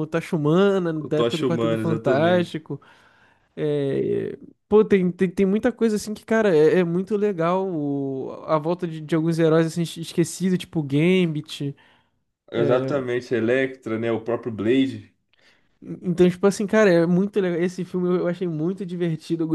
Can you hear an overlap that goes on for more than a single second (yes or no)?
yes